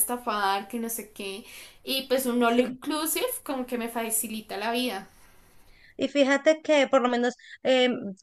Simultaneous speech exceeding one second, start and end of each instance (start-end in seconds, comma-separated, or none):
none